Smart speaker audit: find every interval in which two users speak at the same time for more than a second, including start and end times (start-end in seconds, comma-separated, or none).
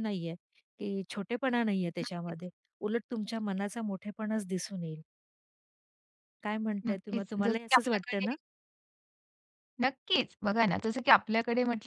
6.9-8.3